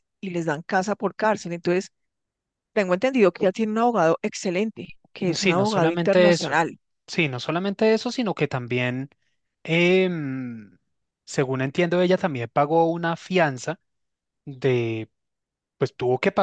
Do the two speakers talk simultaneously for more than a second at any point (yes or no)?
yes